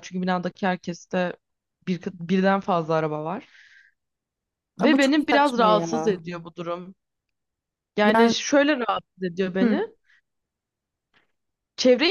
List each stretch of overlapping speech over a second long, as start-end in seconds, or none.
4.8-6.2